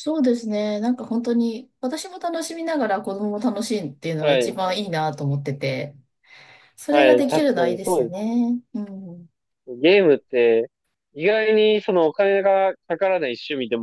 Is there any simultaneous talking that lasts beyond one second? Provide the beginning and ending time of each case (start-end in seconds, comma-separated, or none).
6.9-8.2